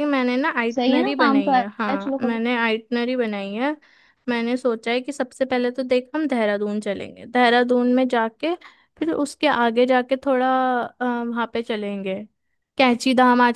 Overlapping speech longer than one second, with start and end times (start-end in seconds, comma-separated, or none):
0.8-2.4